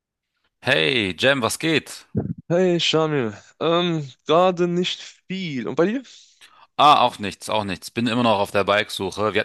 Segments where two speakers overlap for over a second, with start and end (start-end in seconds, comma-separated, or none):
none